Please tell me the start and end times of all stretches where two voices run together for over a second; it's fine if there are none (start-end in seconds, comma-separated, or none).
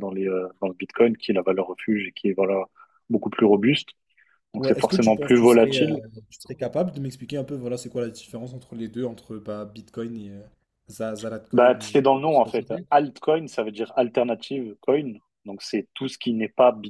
4.6-6.0